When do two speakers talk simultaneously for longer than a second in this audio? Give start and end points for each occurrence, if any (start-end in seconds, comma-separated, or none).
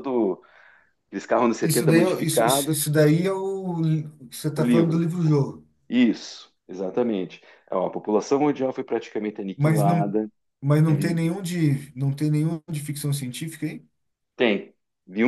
1.6-2.8